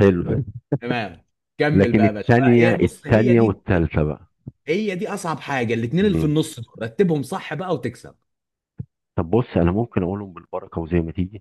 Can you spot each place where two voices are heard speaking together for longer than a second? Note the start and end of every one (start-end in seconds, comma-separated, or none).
1.7-3.6